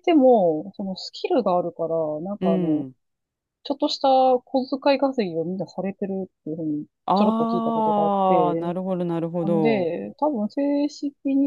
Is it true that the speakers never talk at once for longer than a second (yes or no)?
no